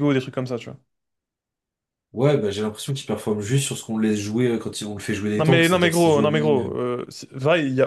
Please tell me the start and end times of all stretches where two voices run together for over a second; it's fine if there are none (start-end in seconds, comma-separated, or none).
5.3-6.7